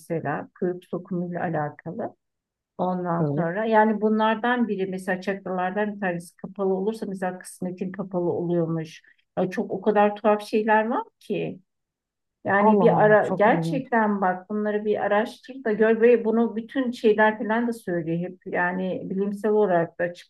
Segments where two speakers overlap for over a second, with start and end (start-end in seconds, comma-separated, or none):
12.6-13.8